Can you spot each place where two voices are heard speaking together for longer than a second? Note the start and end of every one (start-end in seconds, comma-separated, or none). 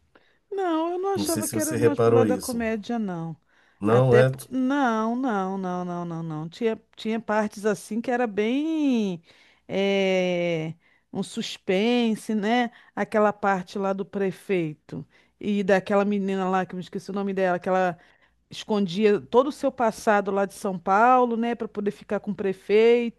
1.1-2.6